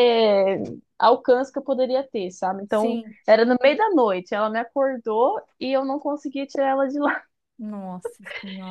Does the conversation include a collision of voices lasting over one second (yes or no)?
no